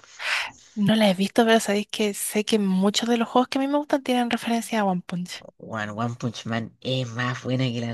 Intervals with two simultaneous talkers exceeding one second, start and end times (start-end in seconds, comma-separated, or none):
none